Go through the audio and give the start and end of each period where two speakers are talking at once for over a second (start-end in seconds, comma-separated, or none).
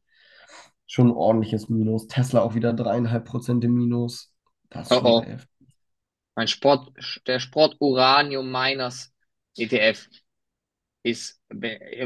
none